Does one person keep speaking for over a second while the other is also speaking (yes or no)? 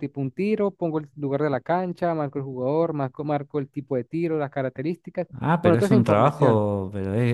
yes